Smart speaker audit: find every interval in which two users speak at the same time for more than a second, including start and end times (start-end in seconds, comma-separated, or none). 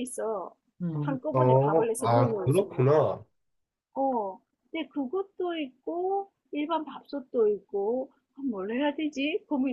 1.0-3.1